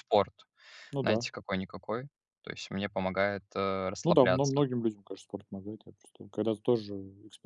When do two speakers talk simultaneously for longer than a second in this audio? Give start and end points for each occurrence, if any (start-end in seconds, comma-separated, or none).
none